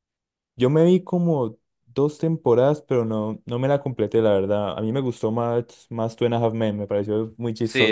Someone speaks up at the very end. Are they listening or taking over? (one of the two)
taking over